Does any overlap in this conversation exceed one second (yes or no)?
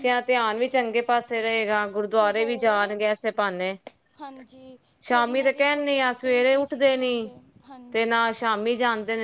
yes